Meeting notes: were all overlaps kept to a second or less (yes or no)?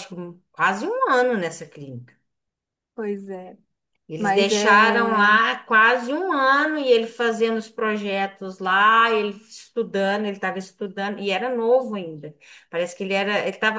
no